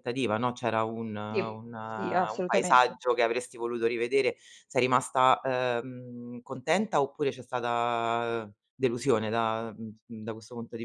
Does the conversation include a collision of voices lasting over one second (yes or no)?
yes